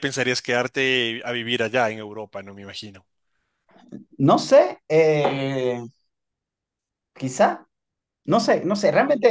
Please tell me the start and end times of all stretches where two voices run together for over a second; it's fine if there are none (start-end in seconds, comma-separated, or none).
none